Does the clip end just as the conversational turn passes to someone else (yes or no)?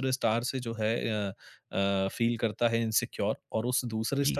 no